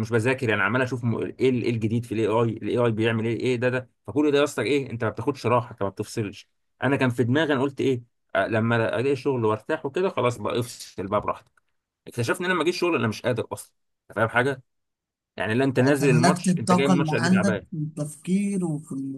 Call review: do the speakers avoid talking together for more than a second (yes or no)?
no